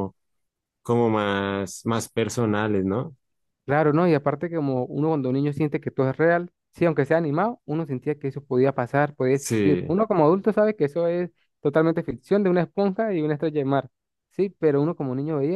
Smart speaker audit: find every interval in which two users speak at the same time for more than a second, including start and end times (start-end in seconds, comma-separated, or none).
none